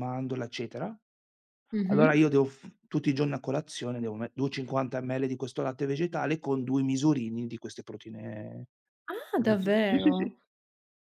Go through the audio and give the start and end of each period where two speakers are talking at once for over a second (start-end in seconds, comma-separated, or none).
none